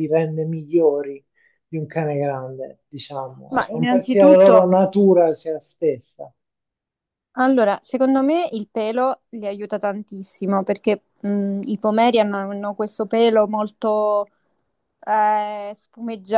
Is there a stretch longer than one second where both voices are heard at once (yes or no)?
yes